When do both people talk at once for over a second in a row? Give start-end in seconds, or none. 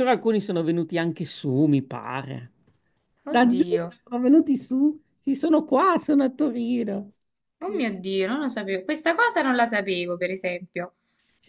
none